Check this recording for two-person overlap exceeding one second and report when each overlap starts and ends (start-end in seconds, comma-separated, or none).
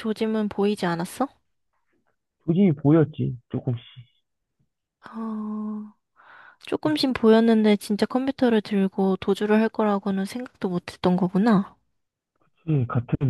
none